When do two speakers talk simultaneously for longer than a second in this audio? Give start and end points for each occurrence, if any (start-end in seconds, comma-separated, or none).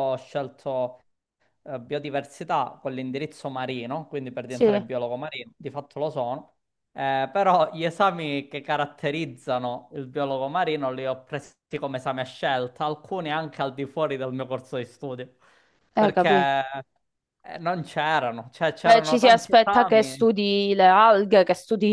18.9-20.3